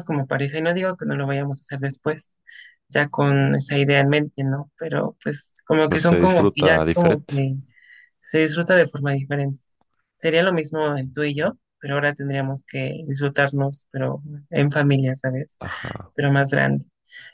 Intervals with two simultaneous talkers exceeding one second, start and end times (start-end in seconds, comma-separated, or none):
5.9-7.3